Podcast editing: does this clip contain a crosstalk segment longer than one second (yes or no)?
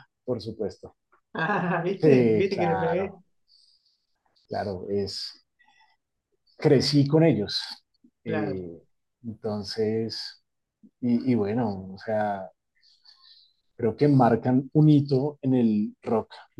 yes